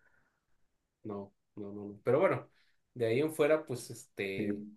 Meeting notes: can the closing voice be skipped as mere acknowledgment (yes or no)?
yes